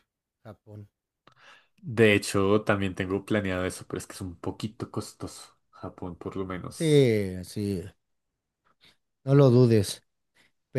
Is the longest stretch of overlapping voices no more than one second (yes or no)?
yes